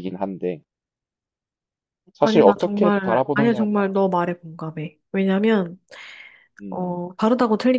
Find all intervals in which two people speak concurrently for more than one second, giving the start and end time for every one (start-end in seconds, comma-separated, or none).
2.2-3.9